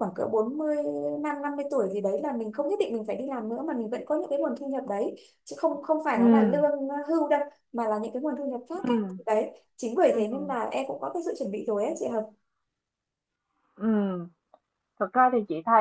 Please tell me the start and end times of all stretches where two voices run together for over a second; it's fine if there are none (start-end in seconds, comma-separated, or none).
none